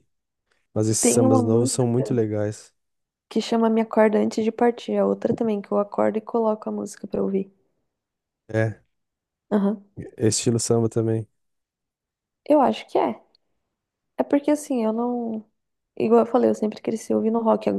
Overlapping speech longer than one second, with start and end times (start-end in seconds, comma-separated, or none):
1.0-2.2